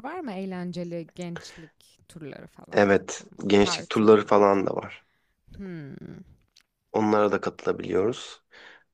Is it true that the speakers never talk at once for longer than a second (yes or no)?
no